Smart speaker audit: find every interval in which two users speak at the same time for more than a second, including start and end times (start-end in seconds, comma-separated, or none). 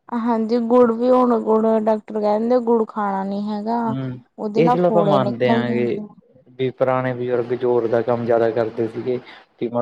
4.6-6.0